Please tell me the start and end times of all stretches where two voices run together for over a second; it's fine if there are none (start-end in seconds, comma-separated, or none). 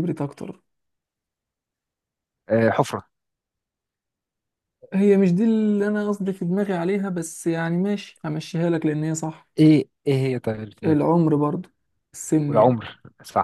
none